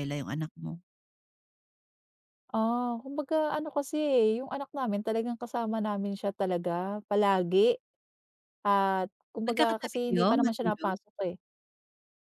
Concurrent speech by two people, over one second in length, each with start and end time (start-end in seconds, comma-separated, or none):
9.5-10.9